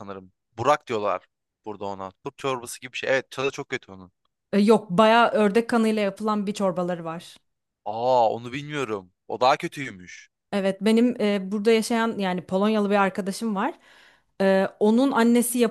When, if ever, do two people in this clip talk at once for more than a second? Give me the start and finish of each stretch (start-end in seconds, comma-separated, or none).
none